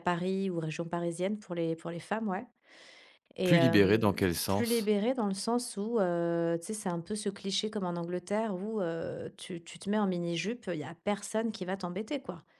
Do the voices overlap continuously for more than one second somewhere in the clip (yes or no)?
yes